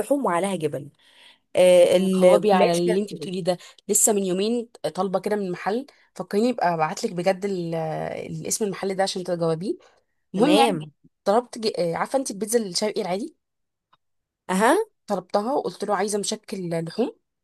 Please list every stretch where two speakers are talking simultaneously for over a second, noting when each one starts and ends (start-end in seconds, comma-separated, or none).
1.9-3.3